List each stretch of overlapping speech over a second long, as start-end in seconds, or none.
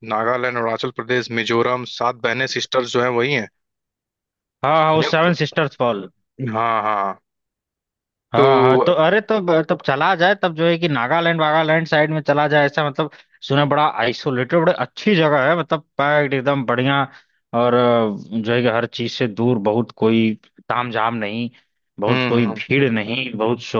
none